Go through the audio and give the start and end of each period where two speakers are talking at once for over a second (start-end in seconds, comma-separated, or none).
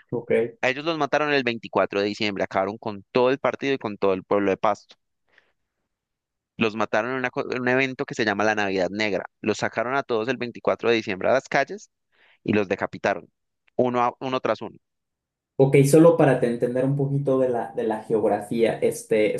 none